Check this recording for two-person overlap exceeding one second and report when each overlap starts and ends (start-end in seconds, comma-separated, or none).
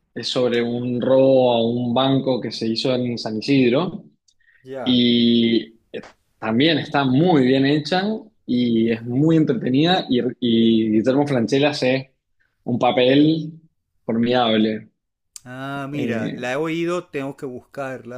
none